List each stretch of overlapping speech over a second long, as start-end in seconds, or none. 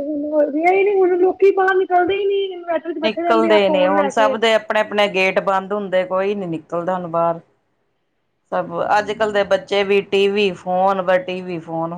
none